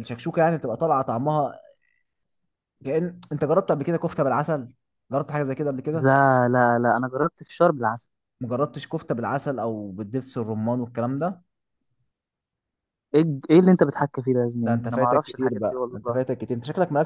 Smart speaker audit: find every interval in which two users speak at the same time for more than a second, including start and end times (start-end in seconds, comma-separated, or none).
14.6-16.2